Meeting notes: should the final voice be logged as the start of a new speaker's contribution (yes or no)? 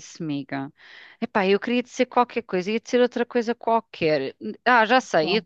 no